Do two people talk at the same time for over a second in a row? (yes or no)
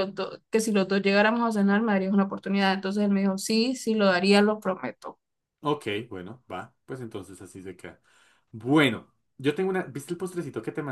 no